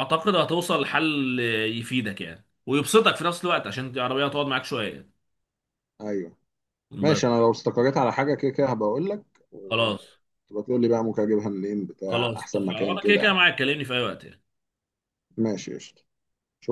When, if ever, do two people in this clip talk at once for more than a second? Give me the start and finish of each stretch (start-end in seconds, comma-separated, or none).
12.1-13.4